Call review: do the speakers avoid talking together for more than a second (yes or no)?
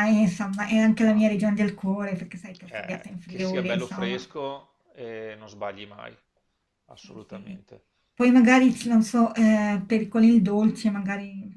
no